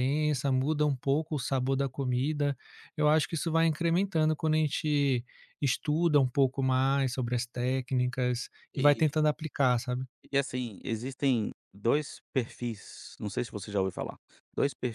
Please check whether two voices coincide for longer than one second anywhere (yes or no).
no